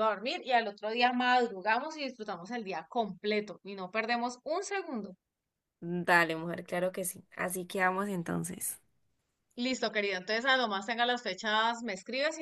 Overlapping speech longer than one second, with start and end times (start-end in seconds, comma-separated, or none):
none